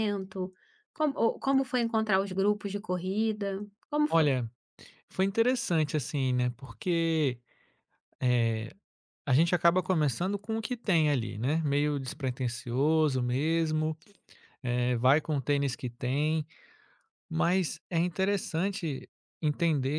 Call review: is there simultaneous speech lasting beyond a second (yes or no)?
no